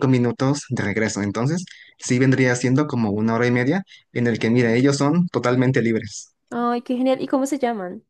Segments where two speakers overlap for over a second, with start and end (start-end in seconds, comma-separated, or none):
none